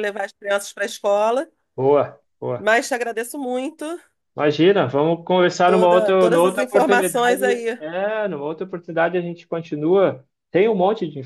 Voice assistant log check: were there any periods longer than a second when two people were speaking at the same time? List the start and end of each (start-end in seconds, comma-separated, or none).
5.6-7.8